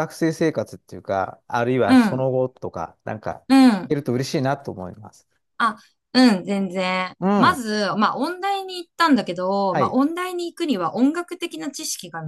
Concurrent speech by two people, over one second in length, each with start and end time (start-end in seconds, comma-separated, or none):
none